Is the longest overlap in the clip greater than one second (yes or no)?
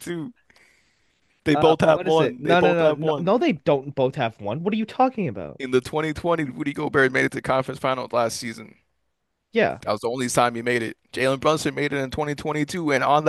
yes